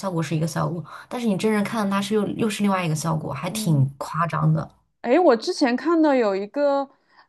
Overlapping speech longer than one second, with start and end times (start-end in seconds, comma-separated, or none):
none